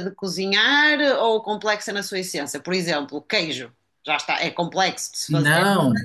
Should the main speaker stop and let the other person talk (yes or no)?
yes